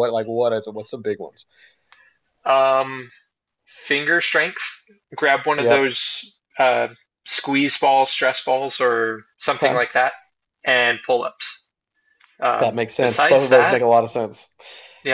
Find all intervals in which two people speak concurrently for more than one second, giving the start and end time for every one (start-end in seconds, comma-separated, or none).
12.6-13.8